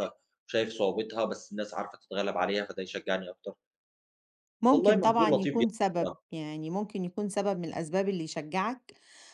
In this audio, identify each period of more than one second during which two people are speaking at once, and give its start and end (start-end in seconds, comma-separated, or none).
4.7-6.2